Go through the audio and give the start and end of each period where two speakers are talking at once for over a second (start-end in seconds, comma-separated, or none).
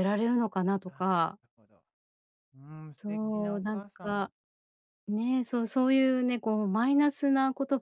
3.0-4.3